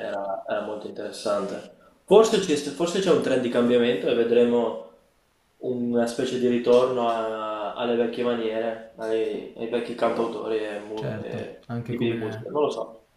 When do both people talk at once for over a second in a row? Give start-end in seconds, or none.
10.9-12.5